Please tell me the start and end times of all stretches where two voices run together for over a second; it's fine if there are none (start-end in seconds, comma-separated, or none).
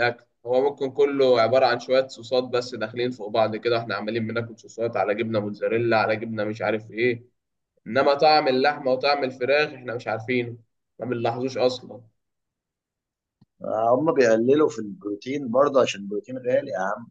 none